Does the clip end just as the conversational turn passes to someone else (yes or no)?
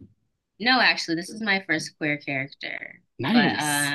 yes